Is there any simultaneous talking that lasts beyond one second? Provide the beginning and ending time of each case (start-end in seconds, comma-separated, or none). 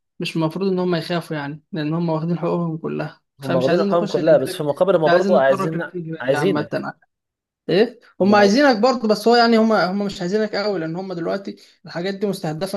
3.4-6.7